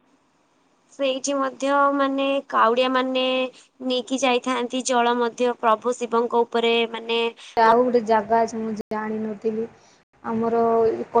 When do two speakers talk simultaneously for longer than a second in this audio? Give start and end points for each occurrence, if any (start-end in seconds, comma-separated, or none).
none